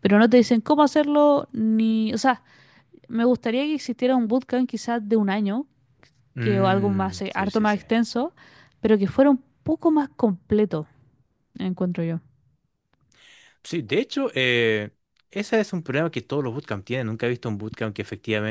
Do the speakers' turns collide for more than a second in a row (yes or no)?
yes